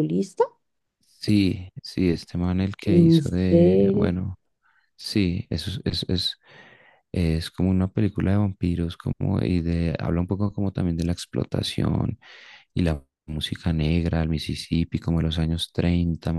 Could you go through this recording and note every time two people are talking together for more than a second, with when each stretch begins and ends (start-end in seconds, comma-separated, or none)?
2.9-4.2